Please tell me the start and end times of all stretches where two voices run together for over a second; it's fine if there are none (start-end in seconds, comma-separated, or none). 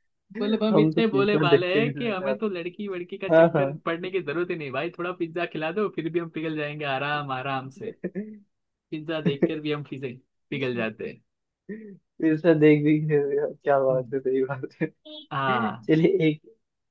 0.7-2.6